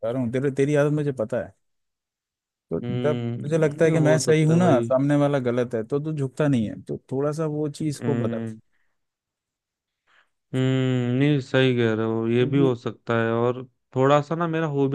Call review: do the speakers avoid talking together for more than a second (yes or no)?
no